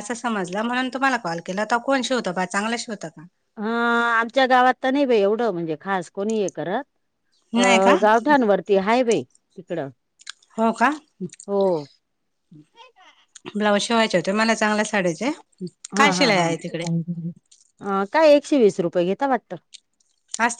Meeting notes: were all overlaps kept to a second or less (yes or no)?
yes